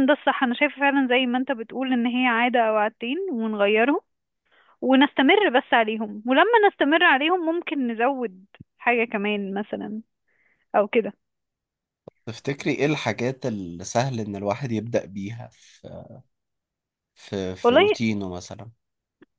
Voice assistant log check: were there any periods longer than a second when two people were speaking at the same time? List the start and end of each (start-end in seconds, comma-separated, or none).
none